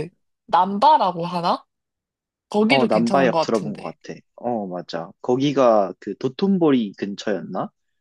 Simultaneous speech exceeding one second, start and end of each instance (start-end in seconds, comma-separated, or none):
2.7-3.9